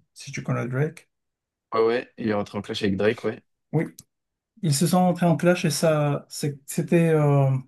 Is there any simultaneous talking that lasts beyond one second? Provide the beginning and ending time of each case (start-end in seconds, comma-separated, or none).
none